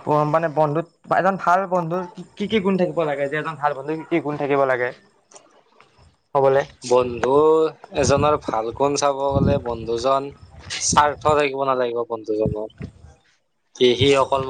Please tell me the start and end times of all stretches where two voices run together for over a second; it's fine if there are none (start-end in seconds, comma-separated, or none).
none